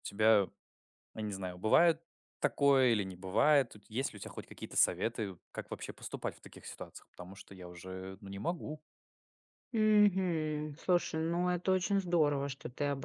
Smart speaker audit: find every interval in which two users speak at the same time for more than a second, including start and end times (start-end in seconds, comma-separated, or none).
none